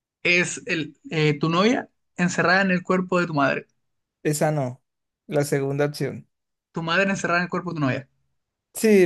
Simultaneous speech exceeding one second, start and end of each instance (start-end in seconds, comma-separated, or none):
none